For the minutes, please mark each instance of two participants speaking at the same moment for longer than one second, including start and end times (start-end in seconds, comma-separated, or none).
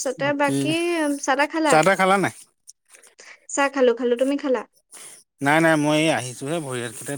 none